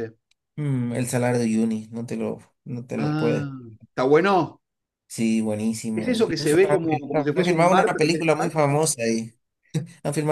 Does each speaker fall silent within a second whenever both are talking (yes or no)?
no